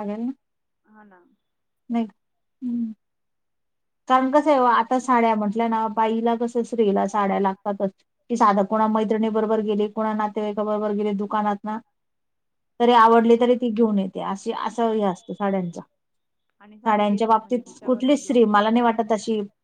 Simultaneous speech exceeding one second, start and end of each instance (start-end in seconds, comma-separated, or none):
16.9-19.0